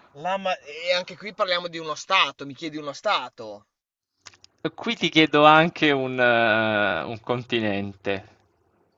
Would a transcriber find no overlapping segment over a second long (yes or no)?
yes